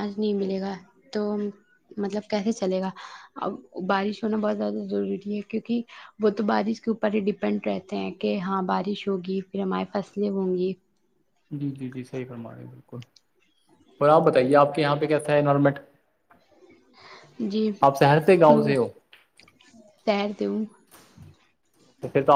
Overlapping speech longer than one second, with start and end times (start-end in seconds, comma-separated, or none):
none